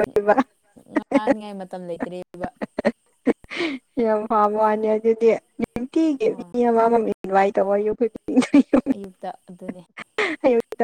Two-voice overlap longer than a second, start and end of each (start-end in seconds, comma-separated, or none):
none